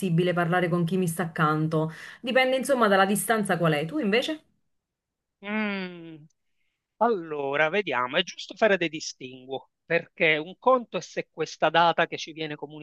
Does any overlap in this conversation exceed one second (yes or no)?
no